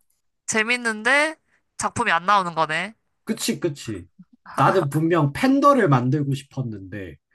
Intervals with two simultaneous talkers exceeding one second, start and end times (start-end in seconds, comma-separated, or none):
none